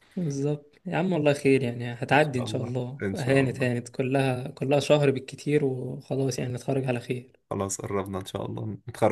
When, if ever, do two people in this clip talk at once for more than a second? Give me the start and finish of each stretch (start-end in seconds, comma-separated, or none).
2.1-3.7